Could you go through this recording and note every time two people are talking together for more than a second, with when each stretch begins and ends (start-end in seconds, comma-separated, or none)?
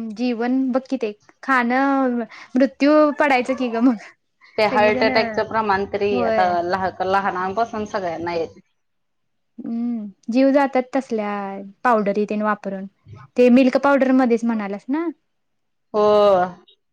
none